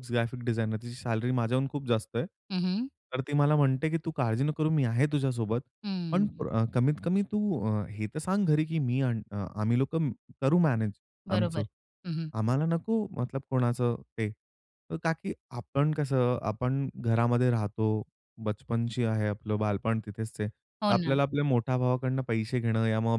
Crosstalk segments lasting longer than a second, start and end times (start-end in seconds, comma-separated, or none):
none